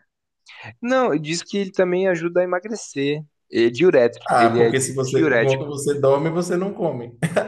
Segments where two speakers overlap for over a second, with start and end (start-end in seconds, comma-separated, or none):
4.3-5.8